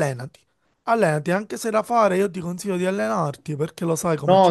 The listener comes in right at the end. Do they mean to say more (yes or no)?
yes